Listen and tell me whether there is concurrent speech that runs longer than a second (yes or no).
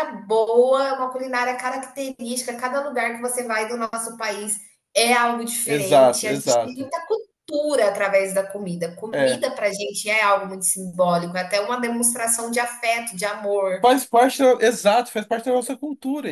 yes